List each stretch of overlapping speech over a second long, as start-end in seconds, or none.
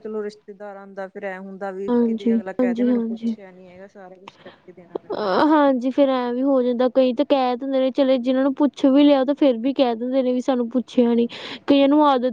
1.9-3.3